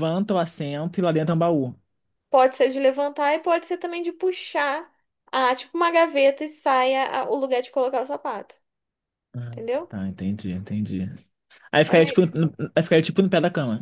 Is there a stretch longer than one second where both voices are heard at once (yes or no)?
no